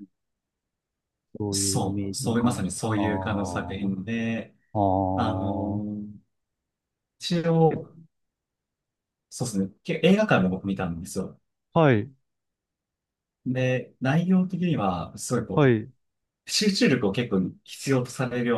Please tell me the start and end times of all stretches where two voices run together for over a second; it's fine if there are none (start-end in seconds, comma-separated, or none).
1.5-3.0